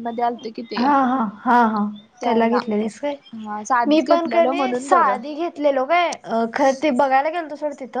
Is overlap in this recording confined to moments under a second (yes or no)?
no